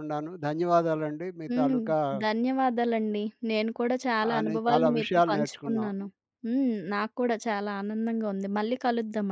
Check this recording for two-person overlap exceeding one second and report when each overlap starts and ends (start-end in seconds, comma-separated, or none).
4.4-5.9